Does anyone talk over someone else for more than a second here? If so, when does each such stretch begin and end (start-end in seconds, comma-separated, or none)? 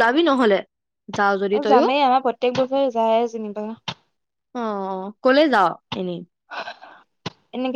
none